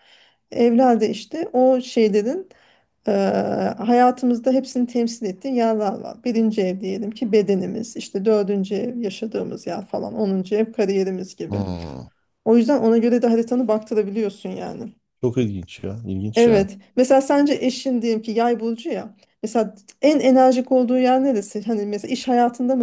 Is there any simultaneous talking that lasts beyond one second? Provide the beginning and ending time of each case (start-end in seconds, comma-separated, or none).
none